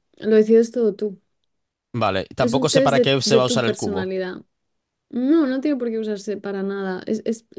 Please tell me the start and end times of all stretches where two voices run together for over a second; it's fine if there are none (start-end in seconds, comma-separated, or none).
2.4-4.1